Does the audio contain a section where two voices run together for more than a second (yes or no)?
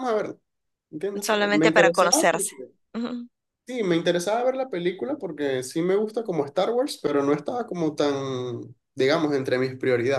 yes